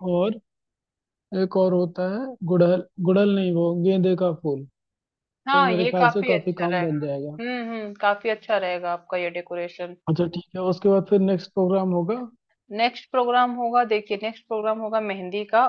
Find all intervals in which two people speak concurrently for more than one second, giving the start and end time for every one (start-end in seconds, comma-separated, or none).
5.5-7.4